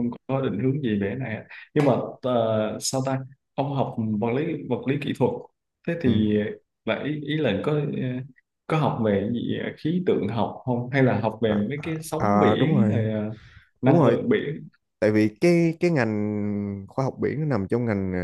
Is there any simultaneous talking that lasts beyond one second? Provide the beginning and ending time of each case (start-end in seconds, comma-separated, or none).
11.4-13.1